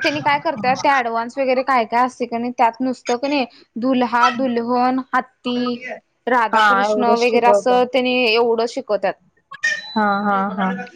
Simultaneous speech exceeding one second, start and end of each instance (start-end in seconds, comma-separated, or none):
6.6-7.9